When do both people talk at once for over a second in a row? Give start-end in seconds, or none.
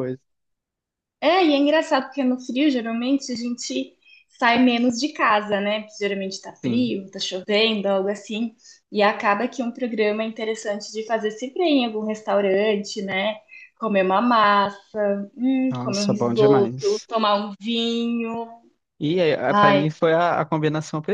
15.7-17.1